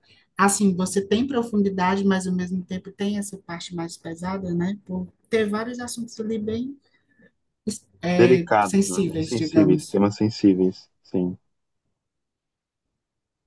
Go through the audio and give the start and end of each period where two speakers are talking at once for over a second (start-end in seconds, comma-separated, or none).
8.2-10.0